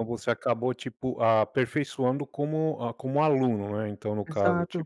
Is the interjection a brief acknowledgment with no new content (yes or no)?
no